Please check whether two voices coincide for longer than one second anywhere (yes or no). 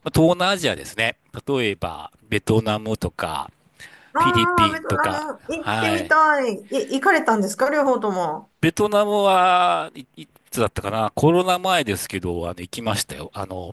yes